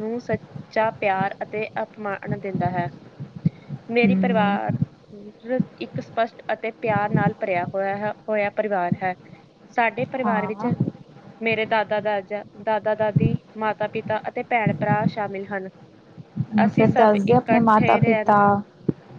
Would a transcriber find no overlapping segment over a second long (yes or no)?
no